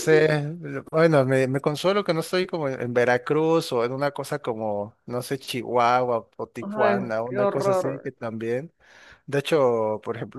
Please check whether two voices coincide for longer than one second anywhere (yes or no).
yes